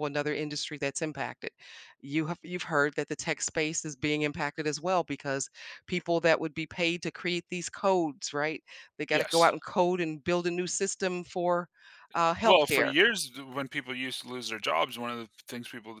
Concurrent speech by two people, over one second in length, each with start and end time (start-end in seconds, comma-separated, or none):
none